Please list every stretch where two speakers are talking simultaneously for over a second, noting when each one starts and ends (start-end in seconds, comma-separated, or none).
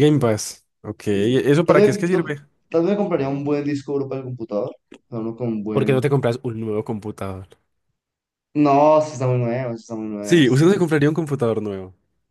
1.1-2.4